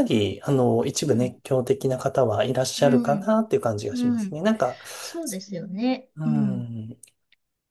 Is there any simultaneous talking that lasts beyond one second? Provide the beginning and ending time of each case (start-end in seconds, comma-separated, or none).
none